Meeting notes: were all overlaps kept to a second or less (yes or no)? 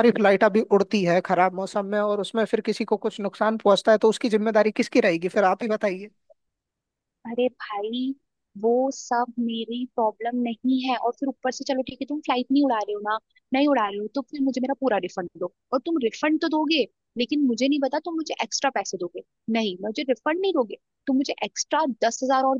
yes